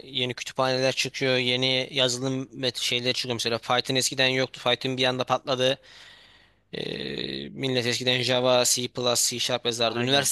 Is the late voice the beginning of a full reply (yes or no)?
no